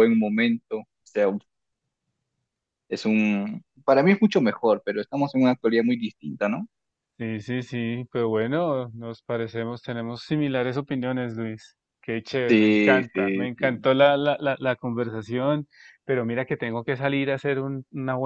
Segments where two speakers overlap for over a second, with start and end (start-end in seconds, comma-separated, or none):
12.5-13.9